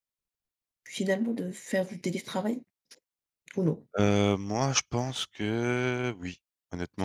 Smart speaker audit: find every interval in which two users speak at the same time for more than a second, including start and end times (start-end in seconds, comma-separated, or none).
none